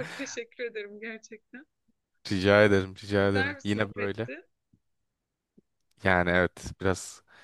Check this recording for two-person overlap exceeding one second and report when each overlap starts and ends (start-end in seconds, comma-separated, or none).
2.6-4.3